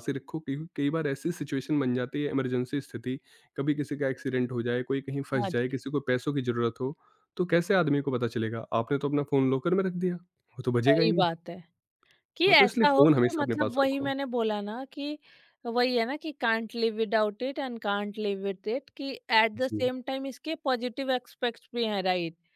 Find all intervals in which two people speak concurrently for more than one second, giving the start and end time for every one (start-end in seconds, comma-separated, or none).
12.5-14.1